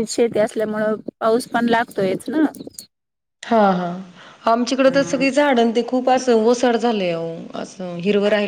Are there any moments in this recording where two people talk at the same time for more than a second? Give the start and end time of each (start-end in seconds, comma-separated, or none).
none